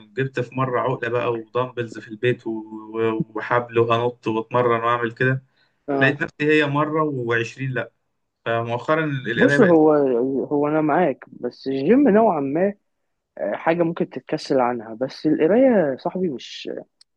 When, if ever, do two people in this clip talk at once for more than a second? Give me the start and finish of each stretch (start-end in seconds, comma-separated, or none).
none